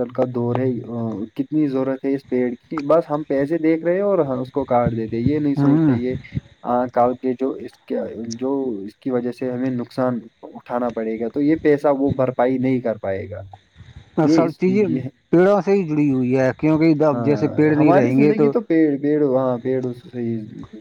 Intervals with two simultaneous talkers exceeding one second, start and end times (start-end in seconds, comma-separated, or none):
17.1-18.5